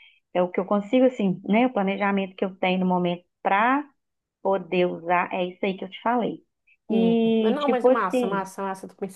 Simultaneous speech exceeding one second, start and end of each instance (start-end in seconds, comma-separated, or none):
6.9-8.5